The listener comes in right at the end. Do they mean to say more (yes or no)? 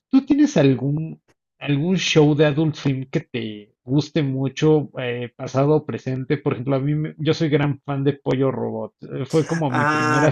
yes